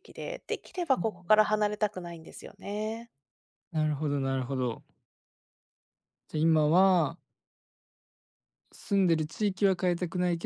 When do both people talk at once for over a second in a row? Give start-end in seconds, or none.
none